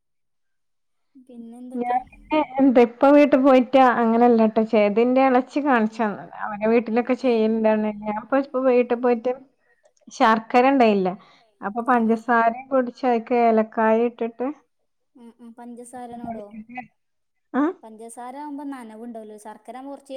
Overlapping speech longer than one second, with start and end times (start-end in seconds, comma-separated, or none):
none